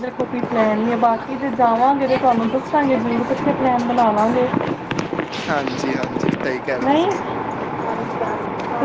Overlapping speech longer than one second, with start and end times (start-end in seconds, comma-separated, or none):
0.8-3.2